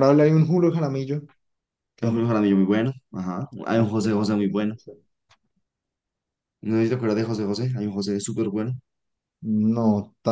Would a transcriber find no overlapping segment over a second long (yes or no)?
yes